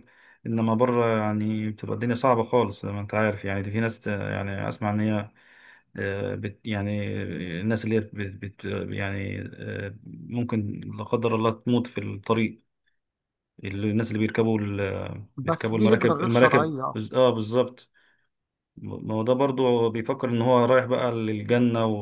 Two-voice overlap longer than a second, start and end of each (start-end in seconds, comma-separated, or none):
15.4-16.9